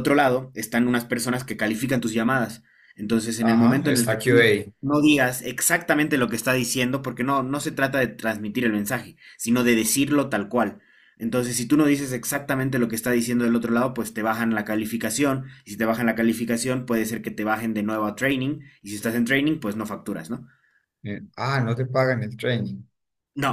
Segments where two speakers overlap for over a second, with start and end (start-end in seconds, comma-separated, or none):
3.4-4.8